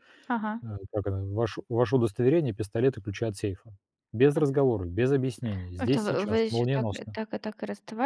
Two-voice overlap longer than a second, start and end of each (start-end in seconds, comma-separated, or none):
5.8-7.2